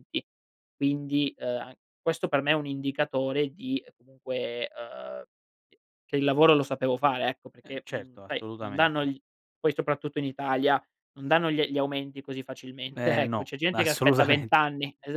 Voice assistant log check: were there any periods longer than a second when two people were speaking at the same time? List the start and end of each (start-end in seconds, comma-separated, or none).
7.6-9.1, 12.9-14.5